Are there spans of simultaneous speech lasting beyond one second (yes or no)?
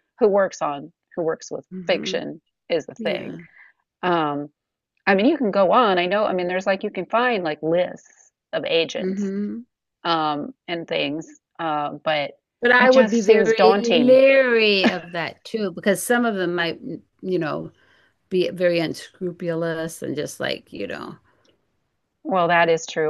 yes